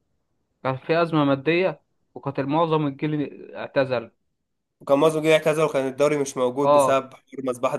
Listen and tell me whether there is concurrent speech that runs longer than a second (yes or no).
no